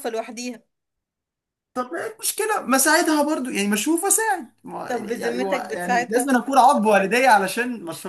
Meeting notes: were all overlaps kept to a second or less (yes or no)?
no